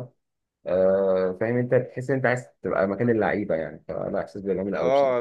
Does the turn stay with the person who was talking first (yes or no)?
no